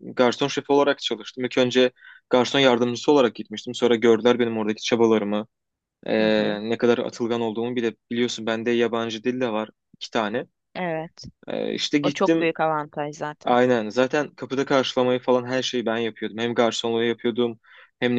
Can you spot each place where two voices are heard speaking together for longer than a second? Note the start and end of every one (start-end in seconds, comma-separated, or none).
none